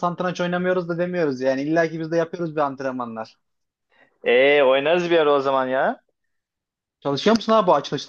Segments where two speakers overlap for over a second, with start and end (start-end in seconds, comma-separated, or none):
none